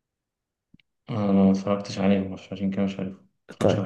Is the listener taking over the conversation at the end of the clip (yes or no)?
yes